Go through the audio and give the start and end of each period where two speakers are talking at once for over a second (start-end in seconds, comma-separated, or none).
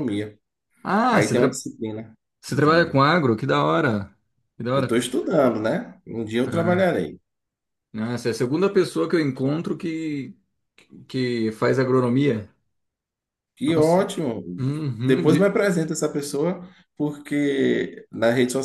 none